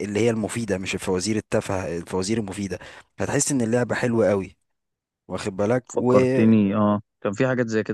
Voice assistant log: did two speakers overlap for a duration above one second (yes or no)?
no